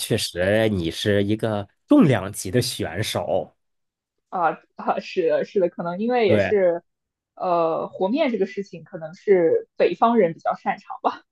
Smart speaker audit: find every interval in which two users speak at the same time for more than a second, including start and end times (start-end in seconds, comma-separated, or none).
none